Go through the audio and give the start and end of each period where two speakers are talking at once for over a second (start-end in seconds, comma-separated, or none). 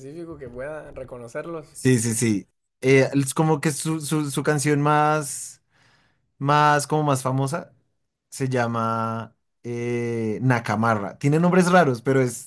none